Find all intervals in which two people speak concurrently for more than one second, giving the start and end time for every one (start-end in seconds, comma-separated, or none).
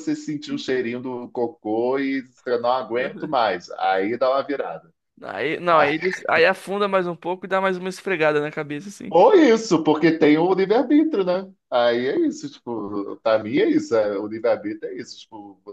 none